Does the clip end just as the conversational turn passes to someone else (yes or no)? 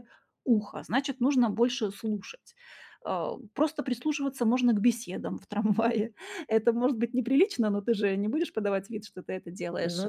no